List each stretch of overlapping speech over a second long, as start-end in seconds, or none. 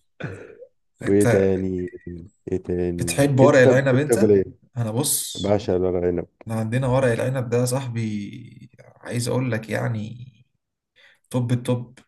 3.0-4.3